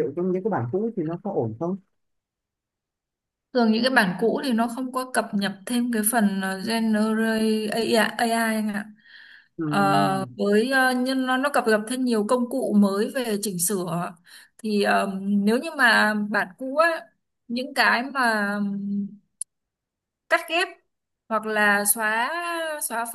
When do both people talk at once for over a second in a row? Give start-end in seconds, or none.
none